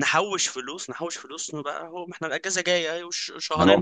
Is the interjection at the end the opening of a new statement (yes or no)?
yes